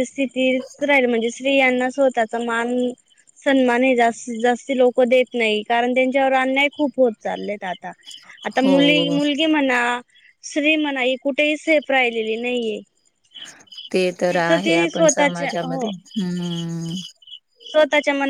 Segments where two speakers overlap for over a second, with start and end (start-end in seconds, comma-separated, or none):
14.3-15.9